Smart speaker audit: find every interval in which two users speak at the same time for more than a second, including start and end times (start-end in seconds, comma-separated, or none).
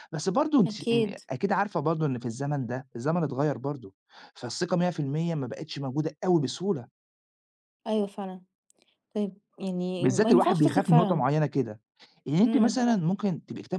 10.0-11.2